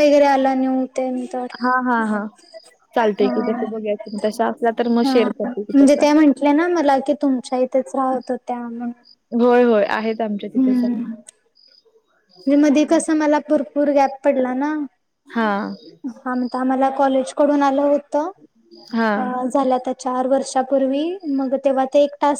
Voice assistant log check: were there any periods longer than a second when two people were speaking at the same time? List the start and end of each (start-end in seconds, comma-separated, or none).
none